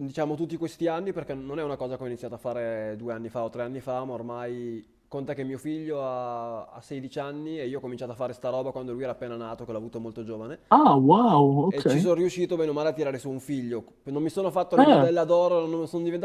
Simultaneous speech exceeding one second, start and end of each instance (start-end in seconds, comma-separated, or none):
none